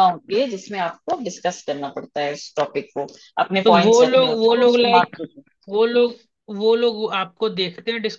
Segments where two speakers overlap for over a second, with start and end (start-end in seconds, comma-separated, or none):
3.6-5.2